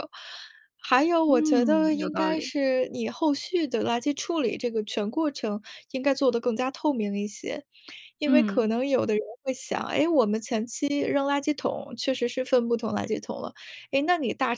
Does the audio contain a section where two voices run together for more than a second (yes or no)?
yes